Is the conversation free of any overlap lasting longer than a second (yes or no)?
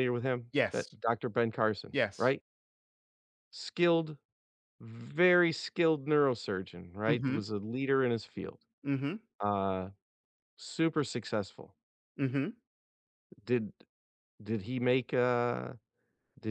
yes